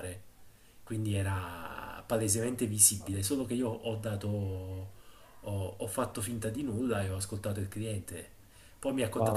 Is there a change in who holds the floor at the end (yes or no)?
no